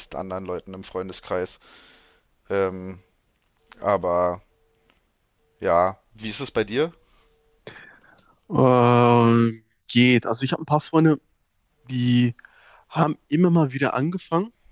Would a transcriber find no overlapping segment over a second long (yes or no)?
yes